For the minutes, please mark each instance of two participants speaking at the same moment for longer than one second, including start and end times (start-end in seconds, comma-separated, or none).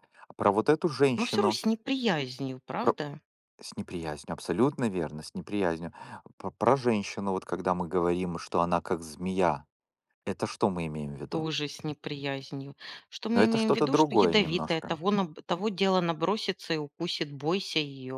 13.3-15.0